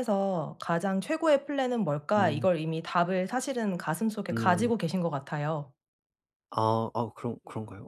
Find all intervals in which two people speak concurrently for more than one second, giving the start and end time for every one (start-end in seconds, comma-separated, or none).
none